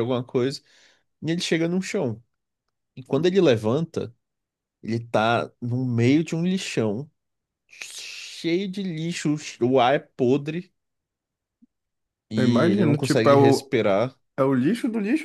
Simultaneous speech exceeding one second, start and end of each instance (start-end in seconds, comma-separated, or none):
12.3-13.7